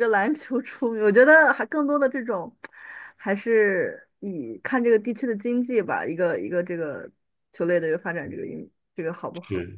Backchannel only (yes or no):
no